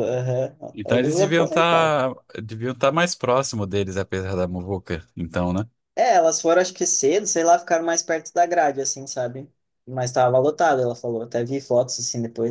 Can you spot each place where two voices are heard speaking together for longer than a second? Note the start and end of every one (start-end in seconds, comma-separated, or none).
0.7-2.0